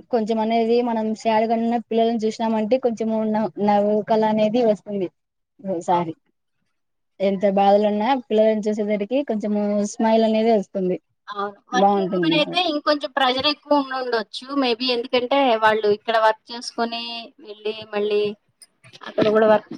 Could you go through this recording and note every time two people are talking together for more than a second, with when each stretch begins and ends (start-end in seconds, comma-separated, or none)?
none